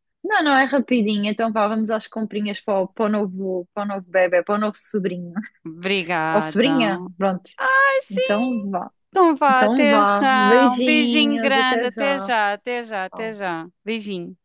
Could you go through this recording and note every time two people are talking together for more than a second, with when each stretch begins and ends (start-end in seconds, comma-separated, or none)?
9.5-12.3